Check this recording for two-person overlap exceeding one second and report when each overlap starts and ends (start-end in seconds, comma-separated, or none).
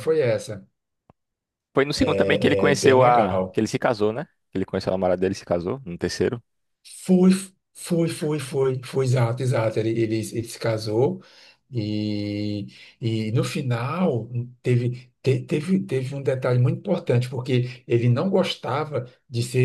2.0-3.6